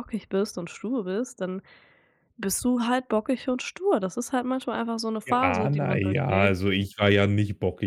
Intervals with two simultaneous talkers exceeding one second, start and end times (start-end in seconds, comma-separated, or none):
5.2-6.7